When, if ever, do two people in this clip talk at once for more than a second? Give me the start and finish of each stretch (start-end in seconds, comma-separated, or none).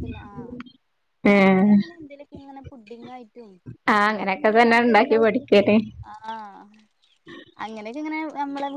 4.0-5.5